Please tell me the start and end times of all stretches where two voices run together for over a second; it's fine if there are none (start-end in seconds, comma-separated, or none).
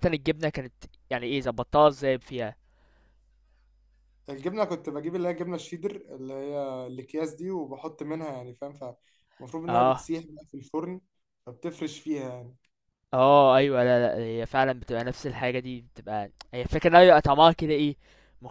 none